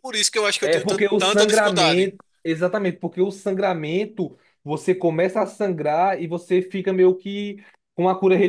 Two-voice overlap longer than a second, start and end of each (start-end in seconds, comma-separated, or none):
0.6-2.1